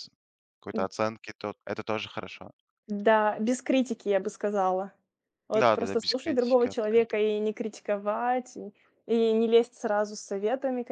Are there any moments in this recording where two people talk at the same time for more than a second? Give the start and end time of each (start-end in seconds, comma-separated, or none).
5.5-7.2